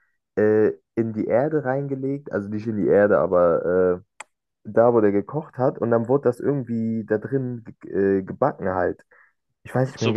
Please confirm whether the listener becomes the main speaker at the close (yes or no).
yes